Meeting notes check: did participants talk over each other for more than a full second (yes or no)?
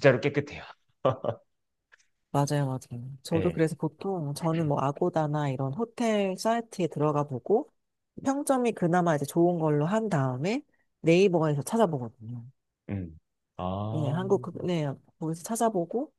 no